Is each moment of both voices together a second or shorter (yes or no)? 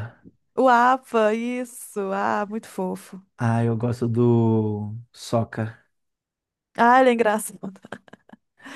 yes